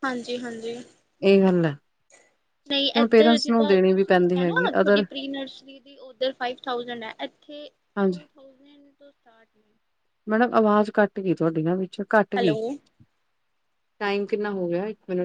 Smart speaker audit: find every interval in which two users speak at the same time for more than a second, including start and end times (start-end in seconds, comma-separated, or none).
3.0-5.0